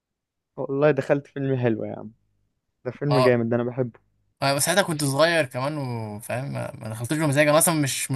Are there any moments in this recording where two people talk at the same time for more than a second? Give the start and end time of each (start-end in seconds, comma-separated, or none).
none